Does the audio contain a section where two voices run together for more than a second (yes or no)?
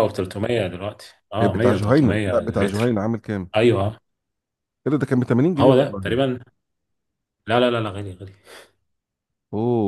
yes